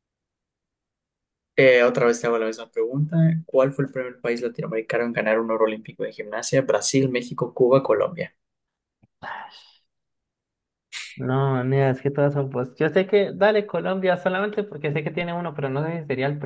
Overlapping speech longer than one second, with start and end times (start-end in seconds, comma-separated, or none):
none